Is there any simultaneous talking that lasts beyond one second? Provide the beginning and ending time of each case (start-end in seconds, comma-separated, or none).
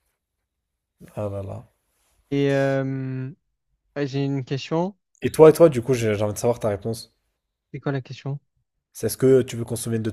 none